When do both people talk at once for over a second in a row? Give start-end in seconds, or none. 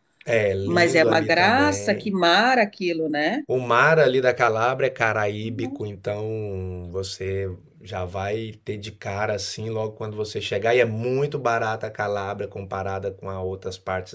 0.6-2.2